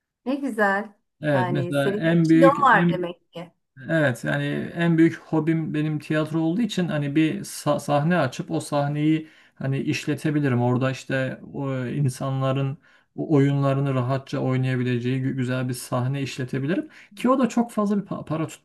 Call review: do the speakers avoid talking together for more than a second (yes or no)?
no